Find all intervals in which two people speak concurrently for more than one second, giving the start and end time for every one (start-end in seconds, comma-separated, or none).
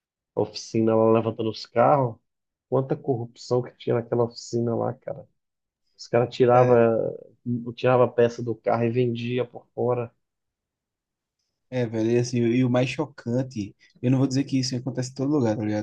none